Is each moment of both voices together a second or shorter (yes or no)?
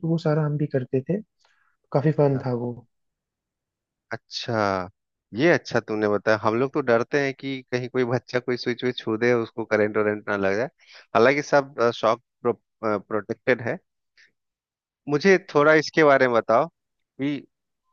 yes